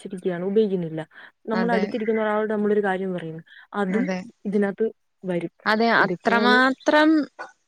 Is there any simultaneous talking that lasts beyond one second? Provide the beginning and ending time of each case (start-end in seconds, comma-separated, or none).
none